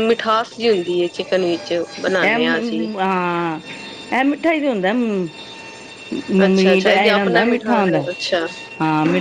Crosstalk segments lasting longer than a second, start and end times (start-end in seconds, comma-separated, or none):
6.5-8.0